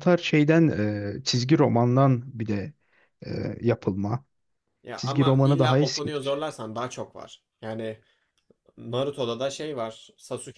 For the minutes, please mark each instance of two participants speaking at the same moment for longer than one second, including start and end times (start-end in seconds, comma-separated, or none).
5.0-6.5